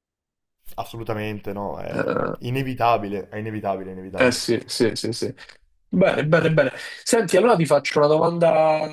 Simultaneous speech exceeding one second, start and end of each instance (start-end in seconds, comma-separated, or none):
none